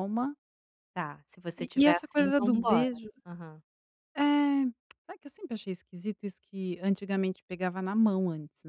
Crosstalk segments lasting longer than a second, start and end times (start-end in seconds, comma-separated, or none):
1.6-2.9